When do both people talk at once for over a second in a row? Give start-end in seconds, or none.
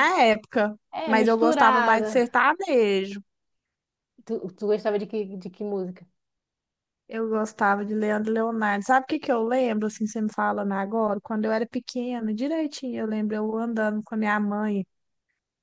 0.9-2.3